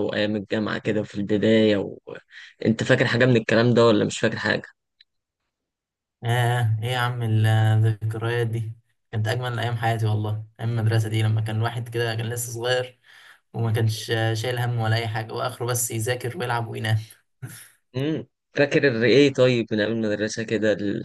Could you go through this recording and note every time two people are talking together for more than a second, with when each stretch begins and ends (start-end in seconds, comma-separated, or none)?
none